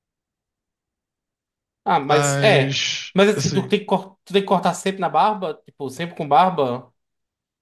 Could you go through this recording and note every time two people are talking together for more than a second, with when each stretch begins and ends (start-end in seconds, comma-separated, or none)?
2.1-3.8